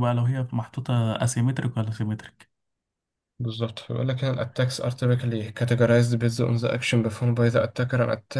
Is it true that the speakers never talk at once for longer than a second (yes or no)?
yes